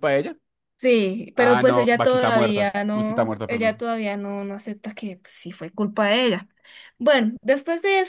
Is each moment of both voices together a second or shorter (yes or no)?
no